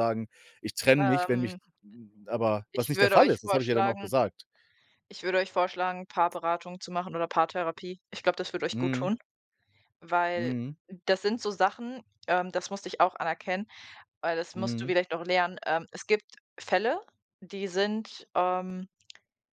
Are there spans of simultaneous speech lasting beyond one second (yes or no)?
yes